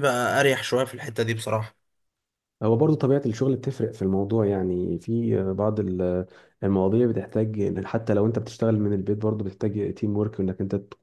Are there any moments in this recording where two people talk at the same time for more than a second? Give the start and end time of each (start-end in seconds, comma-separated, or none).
none